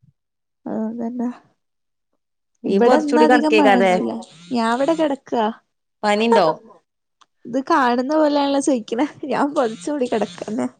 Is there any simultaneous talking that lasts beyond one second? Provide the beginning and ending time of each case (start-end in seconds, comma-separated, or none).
2.7-3.9